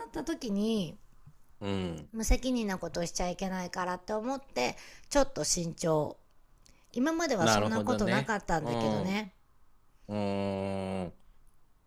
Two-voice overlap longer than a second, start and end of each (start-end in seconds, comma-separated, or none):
7.4-9.2